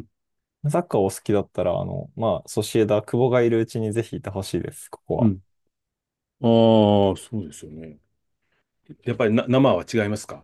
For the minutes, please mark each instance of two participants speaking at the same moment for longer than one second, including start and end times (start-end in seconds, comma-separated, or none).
none